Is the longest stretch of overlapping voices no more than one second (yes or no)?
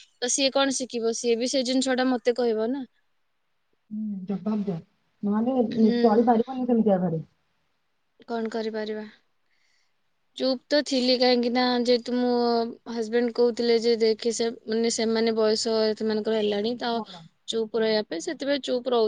yes